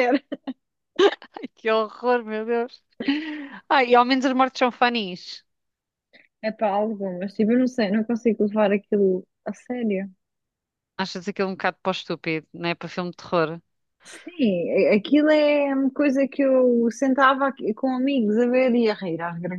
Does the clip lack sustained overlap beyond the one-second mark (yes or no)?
yes